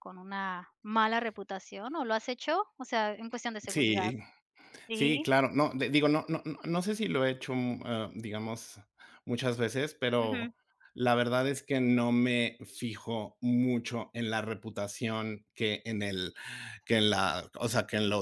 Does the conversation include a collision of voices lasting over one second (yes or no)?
no